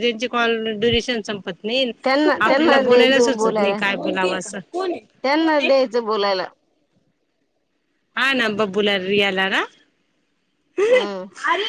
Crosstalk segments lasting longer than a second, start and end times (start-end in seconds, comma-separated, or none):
2.0-3.8